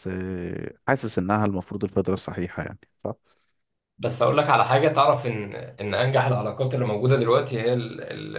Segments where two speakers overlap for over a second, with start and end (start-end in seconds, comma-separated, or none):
none